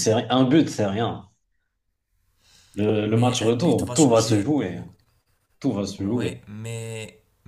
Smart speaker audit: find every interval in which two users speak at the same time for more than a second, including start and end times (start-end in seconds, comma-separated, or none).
3.0-4.8